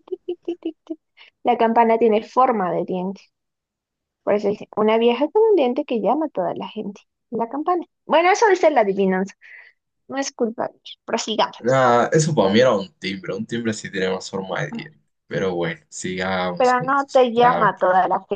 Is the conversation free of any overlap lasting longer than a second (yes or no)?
no